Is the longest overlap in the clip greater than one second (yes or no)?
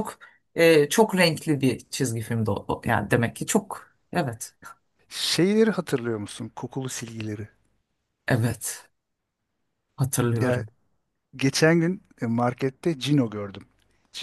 no